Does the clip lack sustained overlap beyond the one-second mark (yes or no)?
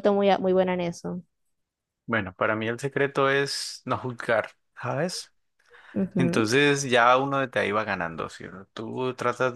yes